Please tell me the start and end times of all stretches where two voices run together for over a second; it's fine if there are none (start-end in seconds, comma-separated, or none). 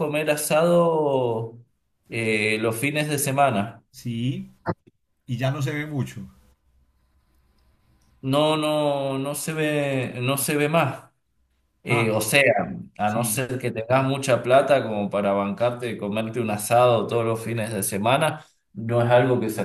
none